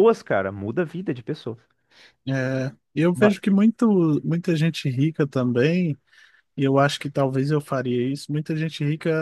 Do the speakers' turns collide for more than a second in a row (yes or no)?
no